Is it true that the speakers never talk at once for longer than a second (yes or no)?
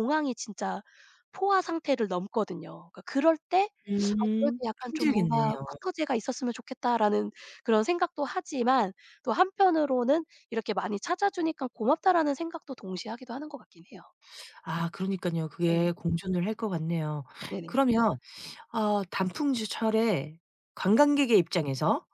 no